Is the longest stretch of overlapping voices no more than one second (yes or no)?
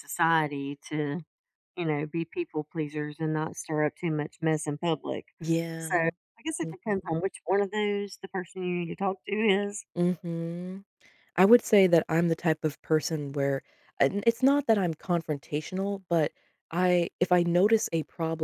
yes